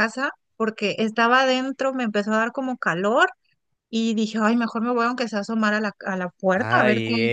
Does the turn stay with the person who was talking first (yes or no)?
no